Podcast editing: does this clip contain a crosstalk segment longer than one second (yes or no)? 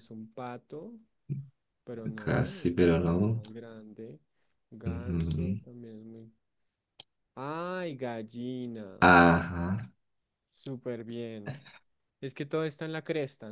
yes